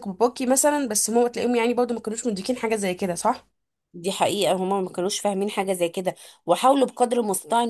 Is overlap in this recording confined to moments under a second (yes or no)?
yes